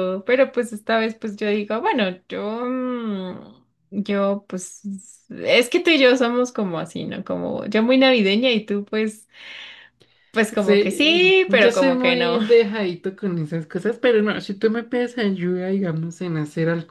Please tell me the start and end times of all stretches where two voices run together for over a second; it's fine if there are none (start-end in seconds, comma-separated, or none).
10.6-12.4